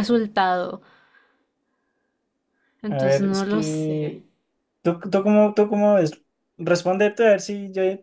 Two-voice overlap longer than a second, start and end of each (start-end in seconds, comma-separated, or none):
2.9-4.2